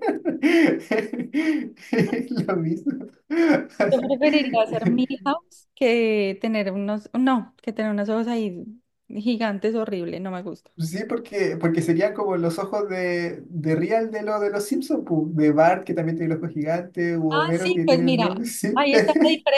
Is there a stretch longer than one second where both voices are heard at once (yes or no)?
yes